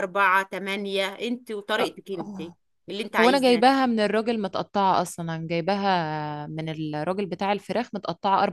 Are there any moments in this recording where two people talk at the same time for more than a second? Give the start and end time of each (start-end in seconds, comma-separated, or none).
none